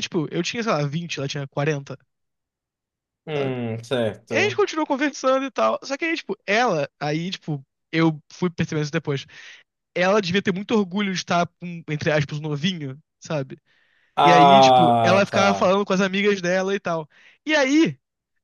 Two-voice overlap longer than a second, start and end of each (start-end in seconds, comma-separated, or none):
14.2-15.7